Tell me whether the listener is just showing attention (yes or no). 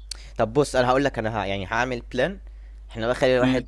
yes